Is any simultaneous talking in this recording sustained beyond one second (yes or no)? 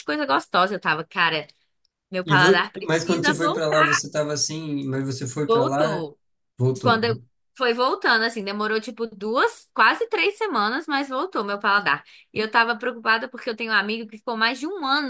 yes